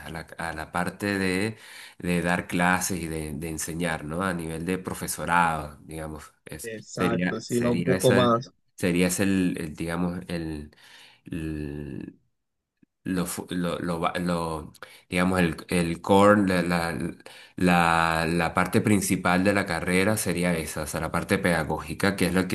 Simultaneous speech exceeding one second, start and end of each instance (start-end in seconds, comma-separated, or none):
6.6-8.5